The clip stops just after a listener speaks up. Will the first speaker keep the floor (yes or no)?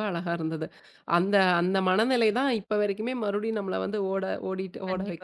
no